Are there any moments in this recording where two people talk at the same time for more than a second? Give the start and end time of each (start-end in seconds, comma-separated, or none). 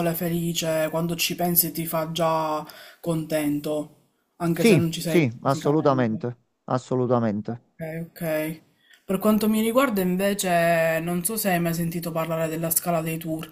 4.5-6.3